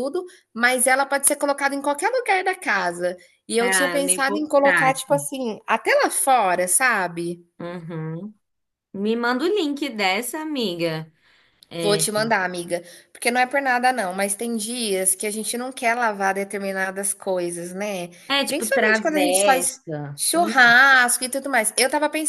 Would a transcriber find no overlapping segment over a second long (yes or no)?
no